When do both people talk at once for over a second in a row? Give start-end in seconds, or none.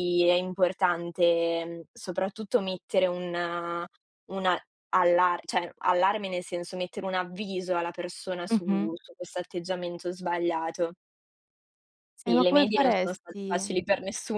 12.2-13.8